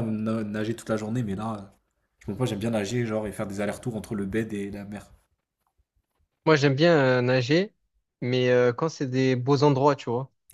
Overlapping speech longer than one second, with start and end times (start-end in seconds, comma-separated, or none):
none